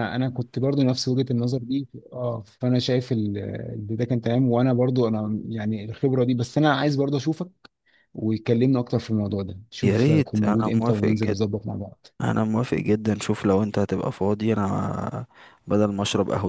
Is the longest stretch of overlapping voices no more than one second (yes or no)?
no